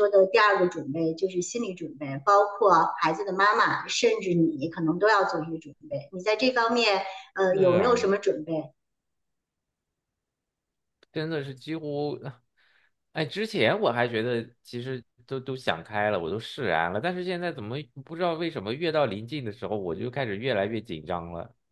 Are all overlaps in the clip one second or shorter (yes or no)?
yes